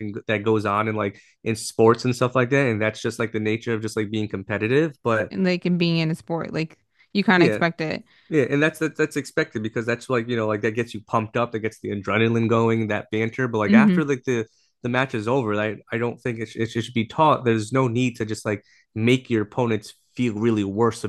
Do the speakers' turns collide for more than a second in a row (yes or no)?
no